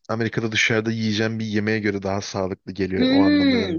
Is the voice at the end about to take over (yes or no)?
yes